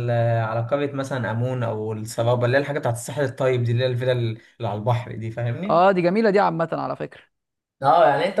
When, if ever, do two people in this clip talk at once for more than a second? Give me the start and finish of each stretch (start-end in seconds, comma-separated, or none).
none